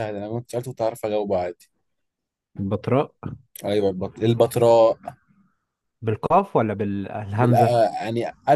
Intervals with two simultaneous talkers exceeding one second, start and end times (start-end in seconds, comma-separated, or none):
none